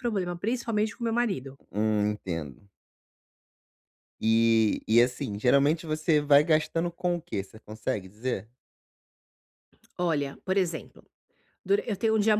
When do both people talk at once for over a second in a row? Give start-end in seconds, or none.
none